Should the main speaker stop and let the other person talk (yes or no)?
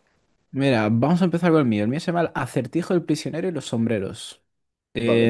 no